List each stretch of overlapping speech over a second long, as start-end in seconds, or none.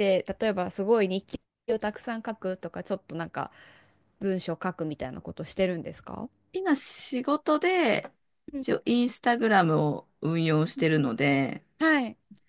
none